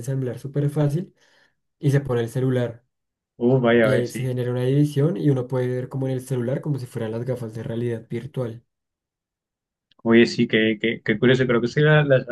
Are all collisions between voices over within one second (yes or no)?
yes